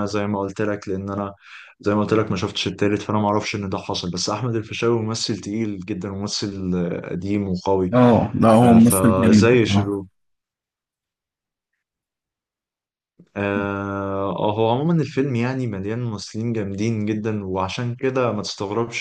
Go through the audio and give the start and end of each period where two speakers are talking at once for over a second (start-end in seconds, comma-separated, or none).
8.6-10.0